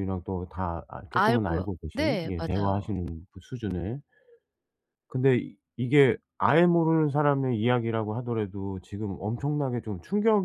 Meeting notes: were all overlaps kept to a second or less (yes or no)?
no